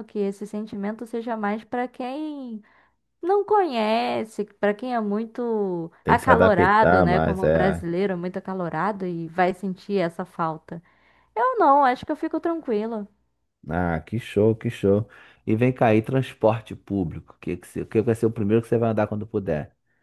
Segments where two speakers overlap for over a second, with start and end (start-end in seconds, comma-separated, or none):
6.0-7.8